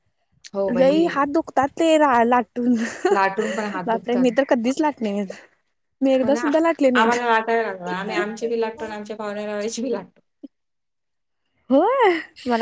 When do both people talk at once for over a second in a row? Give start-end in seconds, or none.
none